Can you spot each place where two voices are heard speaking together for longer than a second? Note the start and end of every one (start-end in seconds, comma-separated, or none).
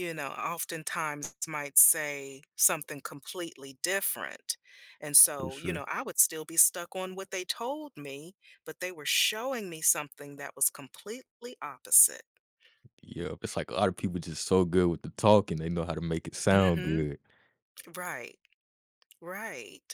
none